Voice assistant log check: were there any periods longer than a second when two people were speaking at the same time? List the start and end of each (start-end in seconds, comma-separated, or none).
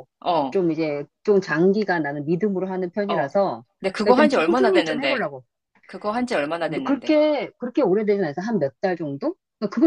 4.0-5.3